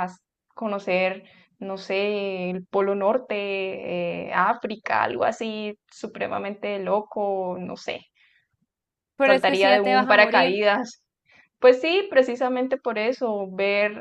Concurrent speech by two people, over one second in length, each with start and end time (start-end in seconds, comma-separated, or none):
9.2-10.7